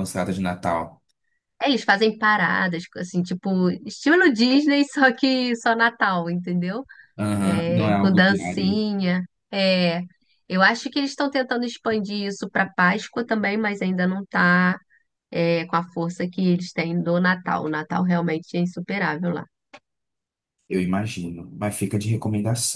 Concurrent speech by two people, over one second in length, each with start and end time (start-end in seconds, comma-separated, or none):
7.4-8.8